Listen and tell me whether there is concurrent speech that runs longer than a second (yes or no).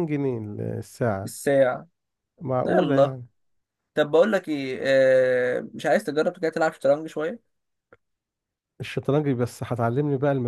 no